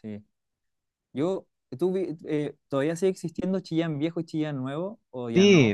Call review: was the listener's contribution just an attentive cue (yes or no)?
no